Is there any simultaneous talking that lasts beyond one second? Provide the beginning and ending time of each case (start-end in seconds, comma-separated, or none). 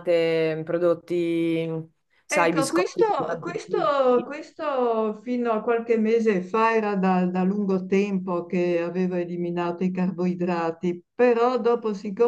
2.3-4.3